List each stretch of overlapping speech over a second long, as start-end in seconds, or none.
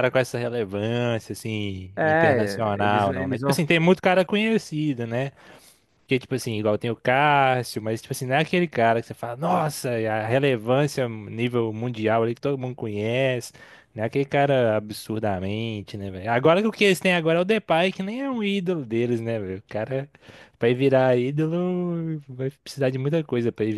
1.9-3.5